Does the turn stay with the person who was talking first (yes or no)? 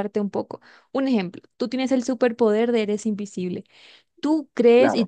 yes